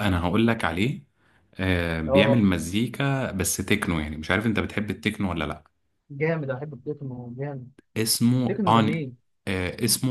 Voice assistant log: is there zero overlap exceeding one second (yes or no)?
yes